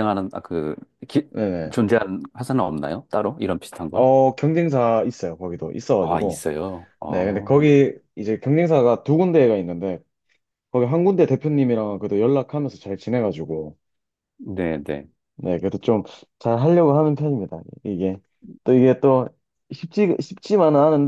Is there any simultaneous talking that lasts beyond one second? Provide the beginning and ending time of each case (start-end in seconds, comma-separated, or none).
none